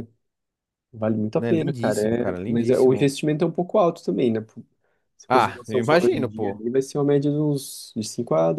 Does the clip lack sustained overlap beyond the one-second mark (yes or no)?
no